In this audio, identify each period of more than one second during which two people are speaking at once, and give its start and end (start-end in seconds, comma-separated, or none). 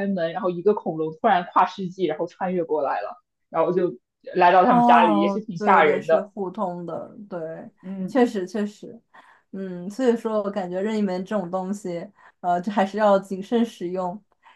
4.7-6.3